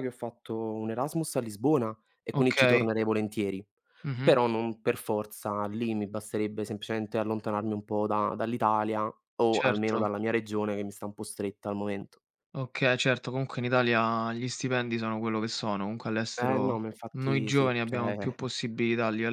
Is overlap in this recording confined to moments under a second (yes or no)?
no